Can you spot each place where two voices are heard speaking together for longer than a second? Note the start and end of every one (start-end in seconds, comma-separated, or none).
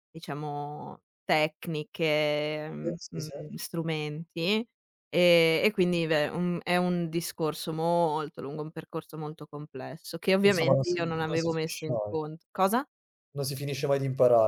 10.4-12.2